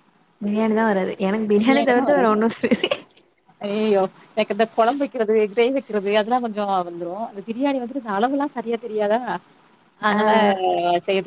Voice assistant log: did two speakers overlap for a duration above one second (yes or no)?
no